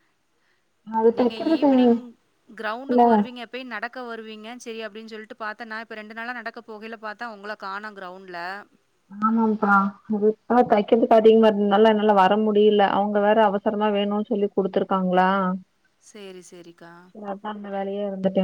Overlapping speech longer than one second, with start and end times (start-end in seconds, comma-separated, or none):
none